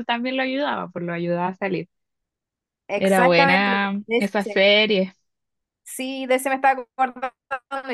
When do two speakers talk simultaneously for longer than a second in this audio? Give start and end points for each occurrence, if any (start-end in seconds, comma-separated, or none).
3.0-4.6